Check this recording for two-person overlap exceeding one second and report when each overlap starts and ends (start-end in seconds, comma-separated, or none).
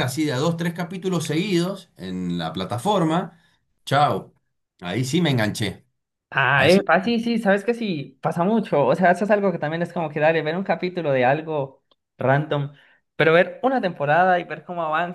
none